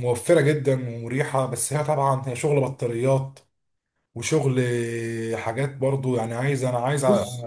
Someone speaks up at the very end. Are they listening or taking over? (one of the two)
taking over